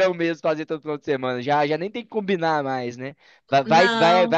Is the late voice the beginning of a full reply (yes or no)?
no